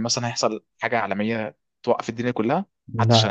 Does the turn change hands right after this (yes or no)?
yes